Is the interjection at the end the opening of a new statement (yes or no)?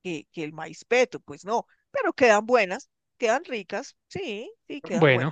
yes